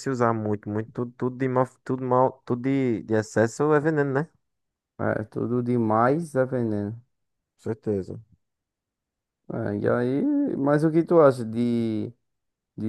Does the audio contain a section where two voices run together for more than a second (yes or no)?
no